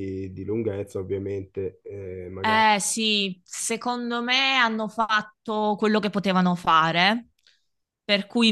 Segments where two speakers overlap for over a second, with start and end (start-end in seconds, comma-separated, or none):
none